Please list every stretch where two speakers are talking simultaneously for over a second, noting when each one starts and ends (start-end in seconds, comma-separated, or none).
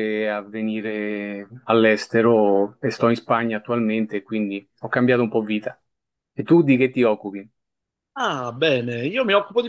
none